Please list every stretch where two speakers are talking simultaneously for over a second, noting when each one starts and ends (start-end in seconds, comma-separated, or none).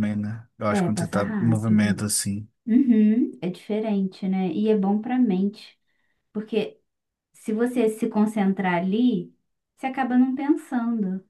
0.7-2.0